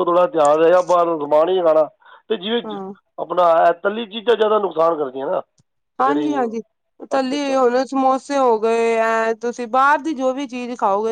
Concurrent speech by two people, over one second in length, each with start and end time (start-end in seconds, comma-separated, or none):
none